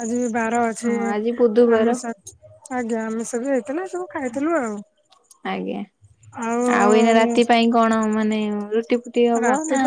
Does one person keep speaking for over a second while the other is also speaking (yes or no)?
no